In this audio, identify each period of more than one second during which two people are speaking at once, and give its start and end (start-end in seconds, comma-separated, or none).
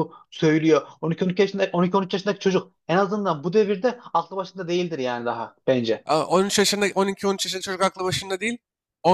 none